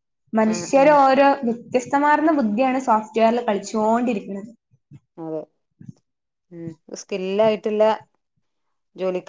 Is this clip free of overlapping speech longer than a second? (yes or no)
yes